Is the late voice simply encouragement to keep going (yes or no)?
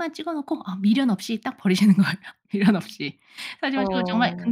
yes